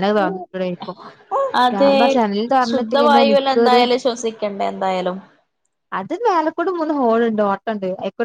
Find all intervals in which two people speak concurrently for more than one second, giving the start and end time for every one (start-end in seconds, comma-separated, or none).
none